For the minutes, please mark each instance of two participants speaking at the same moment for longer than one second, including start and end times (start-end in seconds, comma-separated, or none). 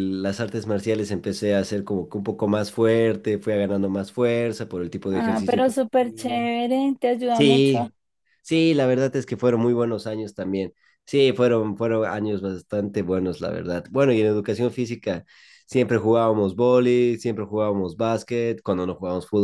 5.1-6.5